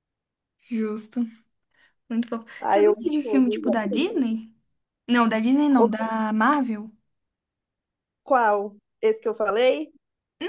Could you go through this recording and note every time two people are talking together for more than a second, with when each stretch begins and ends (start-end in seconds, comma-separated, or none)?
2.6-4.2